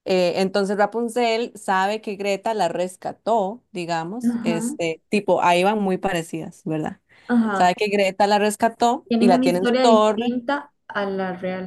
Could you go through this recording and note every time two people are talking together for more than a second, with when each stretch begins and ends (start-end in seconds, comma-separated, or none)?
9.1-10.3